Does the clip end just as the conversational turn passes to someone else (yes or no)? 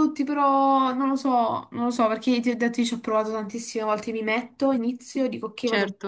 no